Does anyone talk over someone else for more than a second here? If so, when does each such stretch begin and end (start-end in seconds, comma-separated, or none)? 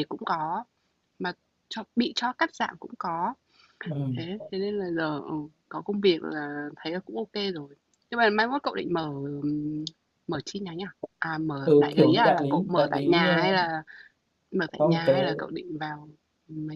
11.6-13.7